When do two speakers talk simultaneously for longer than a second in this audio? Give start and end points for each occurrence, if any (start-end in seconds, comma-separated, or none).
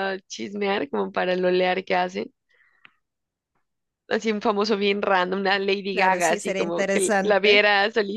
5.9-7.6